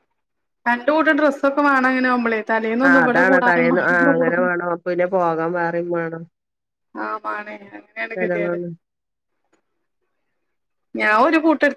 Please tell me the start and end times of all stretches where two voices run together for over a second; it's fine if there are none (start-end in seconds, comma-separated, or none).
none